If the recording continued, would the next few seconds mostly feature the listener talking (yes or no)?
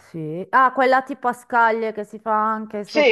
yes